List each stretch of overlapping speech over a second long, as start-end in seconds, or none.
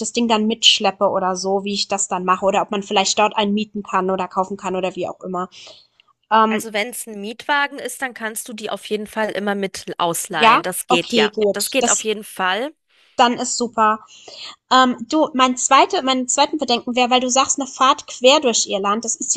10.3-12.1